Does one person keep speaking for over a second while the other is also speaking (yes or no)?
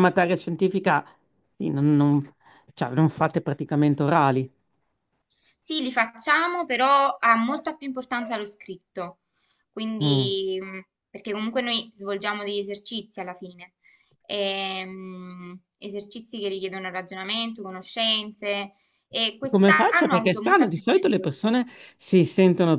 yes